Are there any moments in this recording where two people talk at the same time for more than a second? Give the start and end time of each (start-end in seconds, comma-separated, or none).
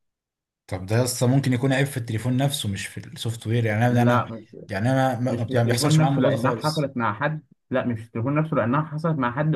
5.3-6.9